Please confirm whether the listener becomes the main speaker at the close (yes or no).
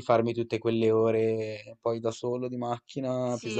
yes